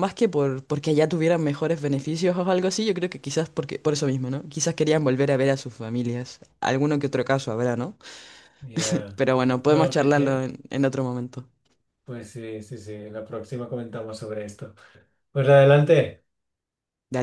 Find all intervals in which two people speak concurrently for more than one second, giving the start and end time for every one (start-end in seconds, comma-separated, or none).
9.2-10.4